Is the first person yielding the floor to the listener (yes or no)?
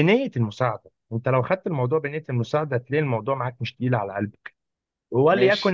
no